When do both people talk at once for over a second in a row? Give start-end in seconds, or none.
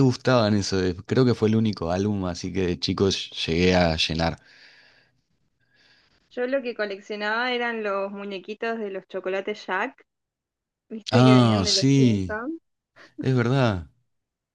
11.1-12.4